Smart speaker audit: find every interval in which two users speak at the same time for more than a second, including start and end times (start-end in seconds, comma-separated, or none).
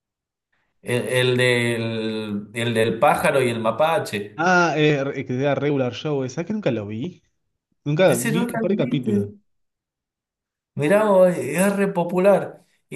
8.1-9.3